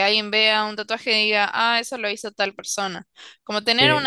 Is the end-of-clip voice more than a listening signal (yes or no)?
no